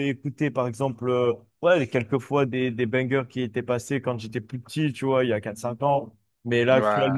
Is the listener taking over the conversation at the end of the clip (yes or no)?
no